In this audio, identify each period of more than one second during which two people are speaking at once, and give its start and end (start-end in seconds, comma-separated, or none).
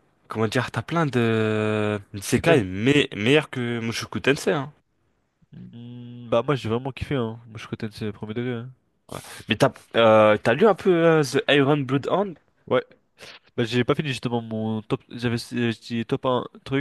none